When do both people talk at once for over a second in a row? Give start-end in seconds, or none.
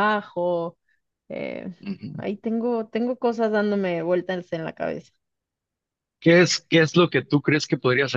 none